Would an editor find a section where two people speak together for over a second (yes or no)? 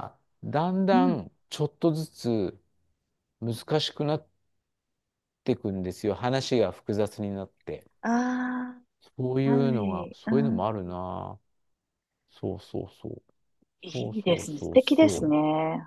yes